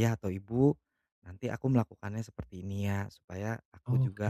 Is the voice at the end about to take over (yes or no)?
no